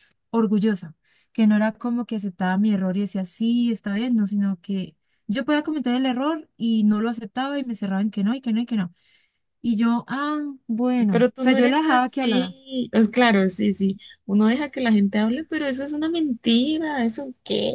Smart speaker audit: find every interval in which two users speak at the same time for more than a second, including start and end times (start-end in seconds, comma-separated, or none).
11.1-12.5